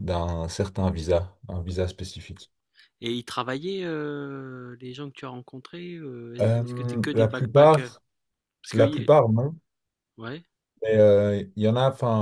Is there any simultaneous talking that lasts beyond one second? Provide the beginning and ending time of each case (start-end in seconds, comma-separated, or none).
6.4-8.0